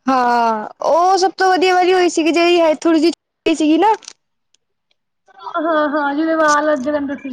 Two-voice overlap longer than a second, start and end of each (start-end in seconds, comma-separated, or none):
none